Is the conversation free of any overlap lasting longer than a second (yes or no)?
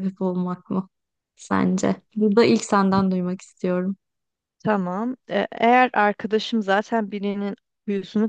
yes